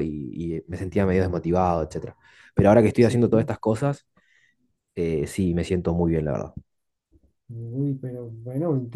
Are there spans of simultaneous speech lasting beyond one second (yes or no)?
no